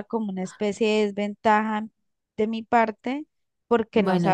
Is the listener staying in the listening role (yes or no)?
yes